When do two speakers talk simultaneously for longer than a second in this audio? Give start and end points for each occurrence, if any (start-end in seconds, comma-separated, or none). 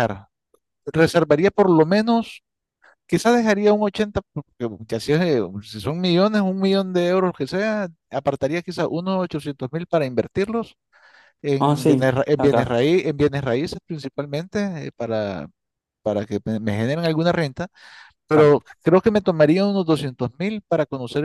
11.6-12.8